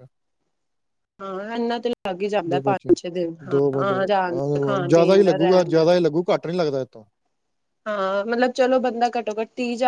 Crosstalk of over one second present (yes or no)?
yes